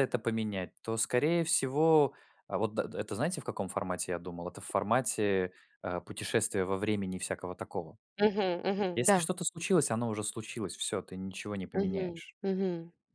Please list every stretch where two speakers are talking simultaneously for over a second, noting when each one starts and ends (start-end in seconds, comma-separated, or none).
none